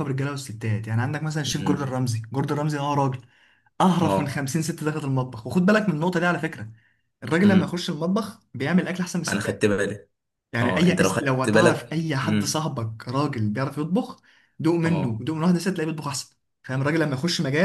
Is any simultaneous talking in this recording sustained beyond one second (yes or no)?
yes